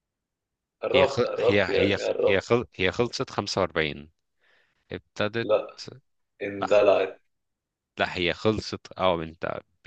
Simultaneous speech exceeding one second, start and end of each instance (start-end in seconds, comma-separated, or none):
0.9-2.5